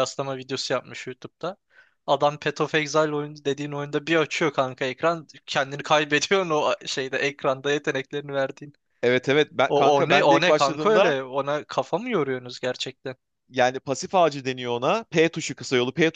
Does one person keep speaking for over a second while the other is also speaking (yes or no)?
yes